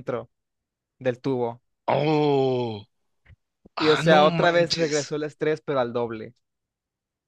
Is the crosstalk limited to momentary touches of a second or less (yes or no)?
no